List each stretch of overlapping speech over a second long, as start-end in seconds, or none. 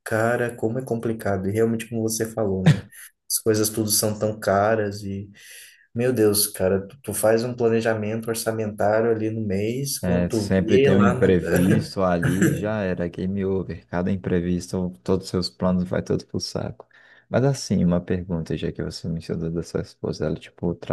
10.0-11.3